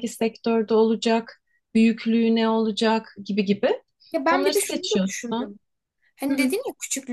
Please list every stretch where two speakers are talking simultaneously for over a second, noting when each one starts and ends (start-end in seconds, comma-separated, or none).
4.3-5.5